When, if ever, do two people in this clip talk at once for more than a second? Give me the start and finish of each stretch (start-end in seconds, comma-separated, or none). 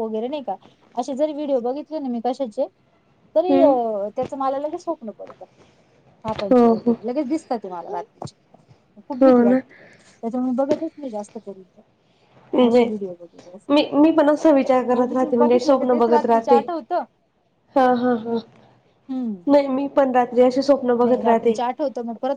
14.9-16.6